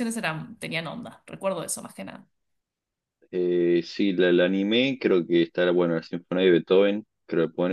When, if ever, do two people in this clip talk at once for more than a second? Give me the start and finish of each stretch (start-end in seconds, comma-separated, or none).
none